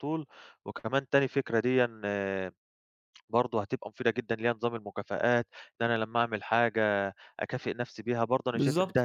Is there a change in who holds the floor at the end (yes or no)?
no